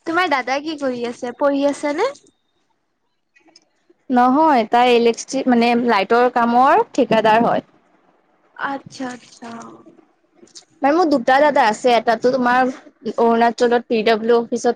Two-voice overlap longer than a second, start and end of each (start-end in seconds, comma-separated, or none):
none